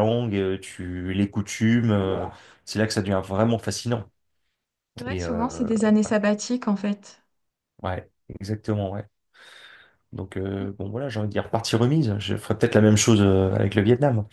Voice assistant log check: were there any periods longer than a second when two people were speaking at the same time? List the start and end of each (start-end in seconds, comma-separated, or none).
none